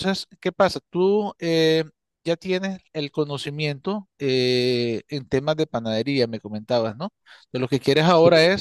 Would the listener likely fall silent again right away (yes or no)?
yes